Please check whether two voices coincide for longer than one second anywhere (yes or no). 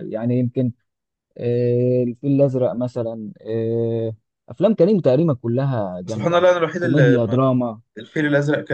yes